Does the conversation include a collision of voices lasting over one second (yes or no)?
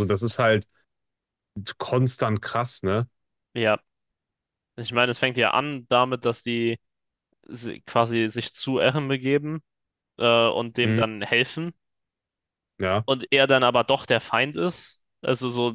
no